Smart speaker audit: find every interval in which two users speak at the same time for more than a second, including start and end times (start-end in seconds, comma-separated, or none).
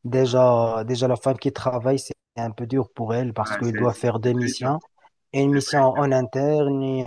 3.4-4.7